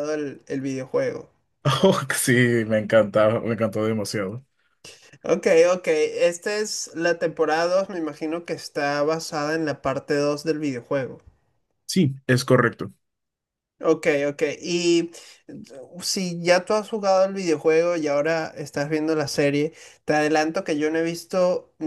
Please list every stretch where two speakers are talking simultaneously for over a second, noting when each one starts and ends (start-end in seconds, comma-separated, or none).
none